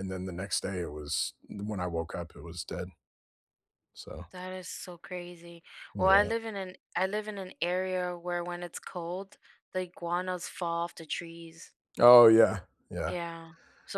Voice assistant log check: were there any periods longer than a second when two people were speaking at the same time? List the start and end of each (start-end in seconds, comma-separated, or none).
none